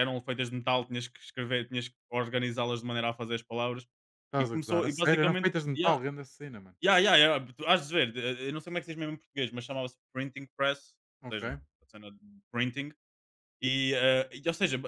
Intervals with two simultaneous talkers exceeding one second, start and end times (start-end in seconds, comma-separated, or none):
4.4-6.0